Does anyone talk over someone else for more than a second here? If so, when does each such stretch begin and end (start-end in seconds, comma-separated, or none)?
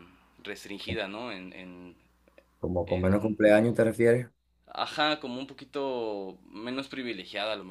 none